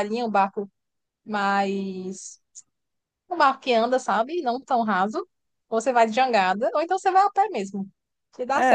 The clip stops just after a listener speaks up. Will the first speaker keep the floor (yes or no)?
no